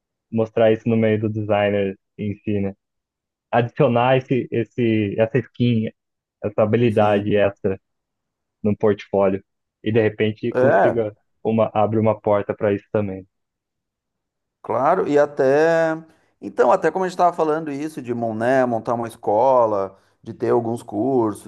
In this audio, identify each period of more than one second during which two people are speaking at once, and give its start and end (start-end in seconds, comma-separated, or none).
none